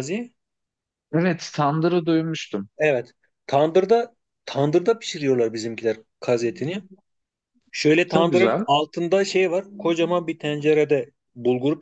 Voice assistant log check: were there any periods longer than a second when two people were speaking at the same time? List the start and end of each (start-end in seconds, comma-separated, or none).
none